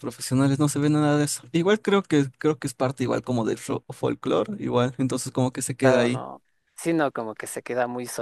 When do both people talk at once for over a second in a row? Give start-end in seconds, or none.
none